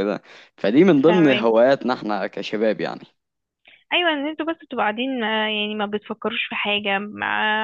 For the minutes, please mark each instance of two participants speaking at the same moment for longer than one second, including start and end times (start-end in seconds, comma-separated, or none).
none